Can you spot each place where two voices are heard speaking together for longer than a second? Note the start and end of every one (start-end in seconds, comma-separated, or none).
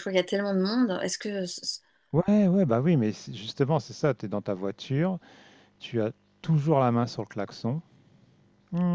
none